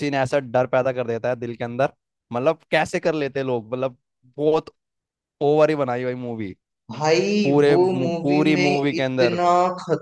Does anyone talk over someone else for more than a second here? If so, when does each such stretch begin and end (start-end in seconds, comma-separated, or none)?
7.4-9.4